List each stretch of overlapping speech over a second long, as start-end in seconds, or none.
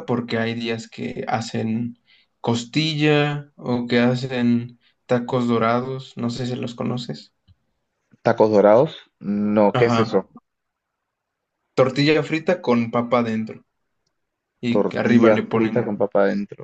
14.7-15.9